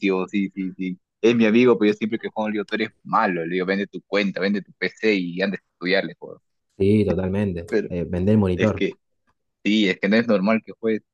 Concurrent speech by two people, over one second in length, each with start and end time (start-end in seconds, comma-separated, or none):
none